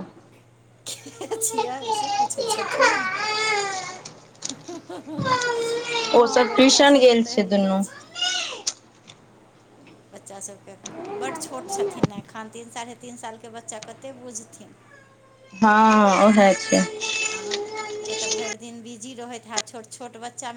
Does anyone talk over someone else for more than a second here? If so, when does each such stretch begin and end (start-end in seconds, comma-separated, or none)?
6.2-7.8